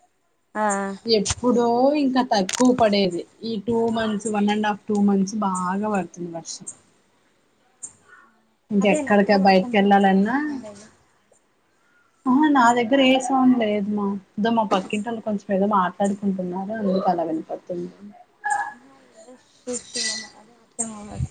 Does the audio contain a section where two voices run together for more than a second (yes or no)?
yes